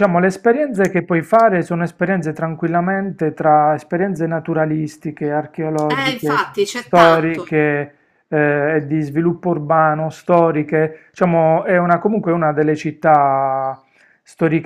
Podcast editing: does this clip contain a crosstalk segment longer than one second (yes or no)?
yes